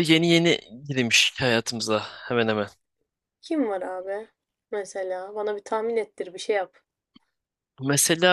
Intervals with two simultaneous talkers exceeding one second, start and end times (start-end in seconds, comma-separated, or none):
none